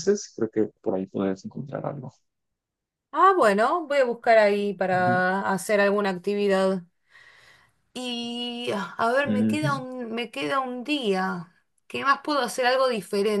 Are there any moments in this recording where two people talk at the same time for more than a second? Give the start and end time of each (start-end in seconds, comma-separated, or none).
none